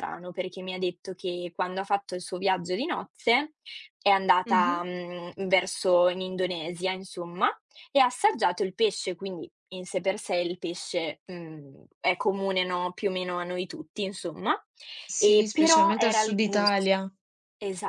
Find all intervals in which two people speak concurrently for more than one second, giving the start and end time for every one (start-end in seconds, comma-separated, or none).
15.2-16.9